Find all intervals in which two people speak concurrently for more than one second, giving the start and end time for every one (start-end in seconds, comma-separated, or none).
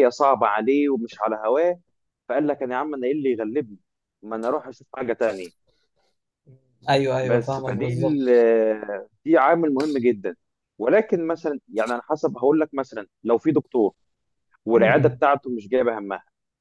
7.2-8.4